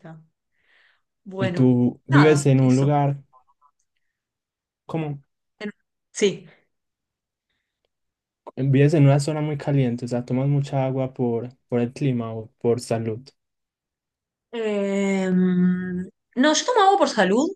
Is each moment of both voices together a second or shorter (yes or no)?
no